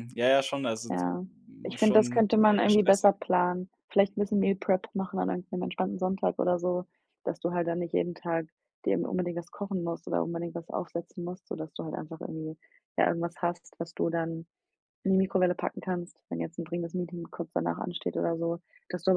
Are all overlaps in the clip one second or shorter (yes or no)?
no